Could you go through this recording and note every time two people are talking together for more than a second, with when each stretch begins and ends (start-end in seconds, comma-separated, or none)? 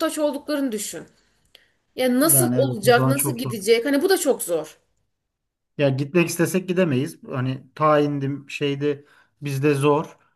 2.2-3.5